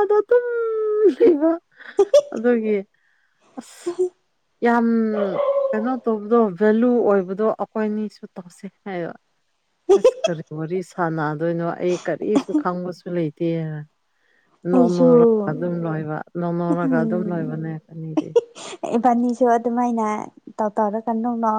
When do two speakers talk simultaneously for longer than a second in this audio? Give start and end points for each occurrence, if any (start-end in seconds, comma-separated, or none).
none